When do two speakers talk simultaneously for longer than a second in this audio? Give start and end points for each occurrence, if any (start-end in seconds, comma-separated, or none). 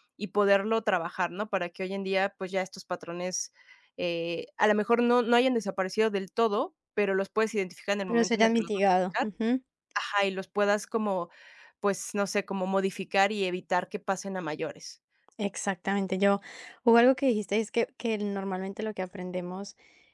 8.0-9.3